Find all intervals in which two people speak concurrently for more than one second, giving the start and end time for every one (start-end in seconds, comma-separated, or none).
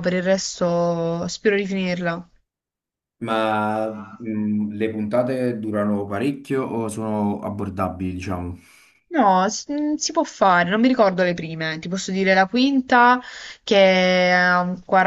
none